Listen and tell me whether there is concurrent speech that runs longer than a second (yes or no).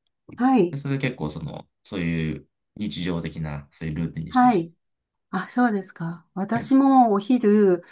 no